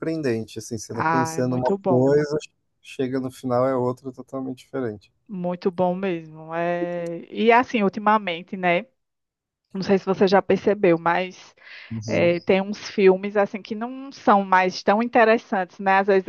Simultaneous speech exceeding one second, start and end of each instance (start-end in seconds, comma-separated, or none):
0.9-2.2